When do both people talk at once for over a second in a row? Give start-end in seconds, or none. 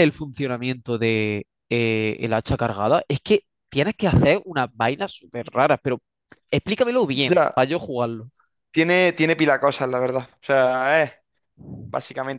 none